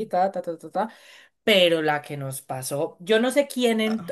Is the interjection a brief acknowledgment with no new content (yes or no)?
no